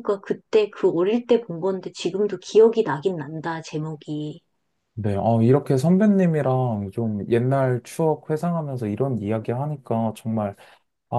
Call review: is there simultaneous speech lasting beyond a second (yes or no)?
no